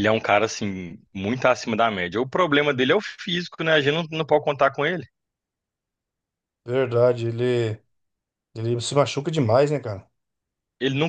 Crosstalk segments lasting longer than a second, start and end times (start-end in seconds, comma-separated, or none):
none